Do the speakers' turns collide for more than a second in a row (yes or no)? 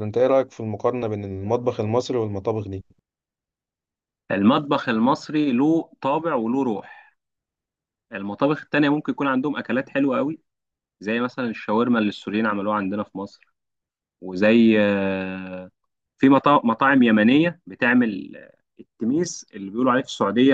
no